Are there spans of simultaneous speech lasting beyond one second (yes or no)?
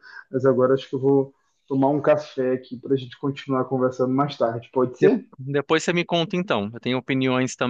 no